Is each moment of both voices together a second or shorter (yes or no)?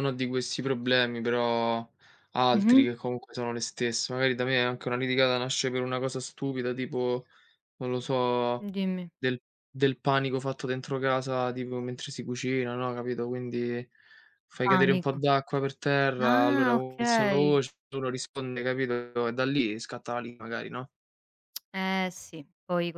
no